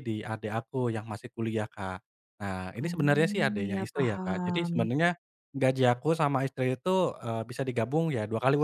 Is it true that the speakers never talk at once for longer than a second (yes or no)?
no